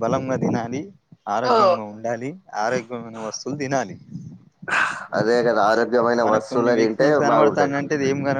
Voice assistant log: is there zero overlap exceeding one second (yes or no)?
no